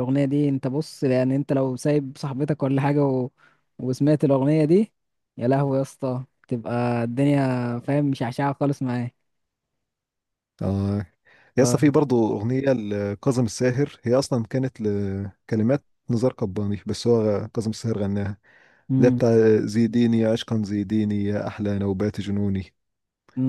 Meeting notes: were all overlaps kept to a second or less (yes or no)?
yes